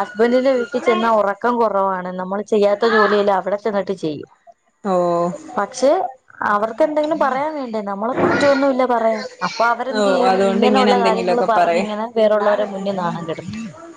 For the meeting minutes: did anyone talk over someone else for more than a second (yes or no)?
yes